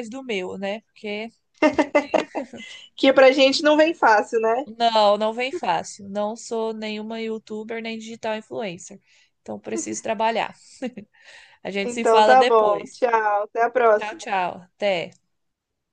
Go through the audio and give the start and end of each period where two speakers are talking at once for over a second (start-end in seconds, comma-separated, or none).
11.8-13.1